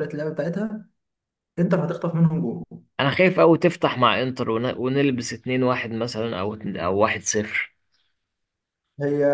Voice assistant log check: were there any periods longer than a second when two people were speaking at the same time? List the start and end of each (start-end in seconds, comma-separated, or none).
none